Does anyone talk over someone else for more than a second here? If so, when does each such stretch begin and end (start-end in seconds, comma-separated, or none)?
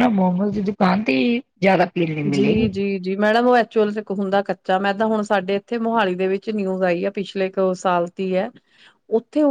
none